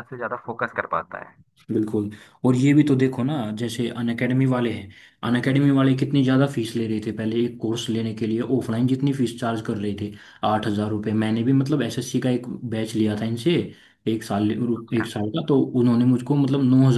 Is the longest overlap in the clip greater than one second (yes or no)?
no